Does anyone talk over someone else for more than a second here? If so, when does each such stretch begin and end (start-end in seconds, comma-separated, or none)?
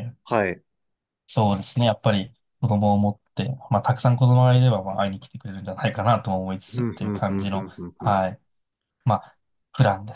6.7-8.2